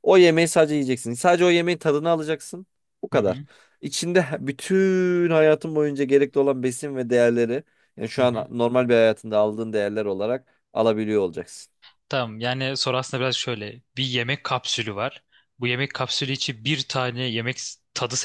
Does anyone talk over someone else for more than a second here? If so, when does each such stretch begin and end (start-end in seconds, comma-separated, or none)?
none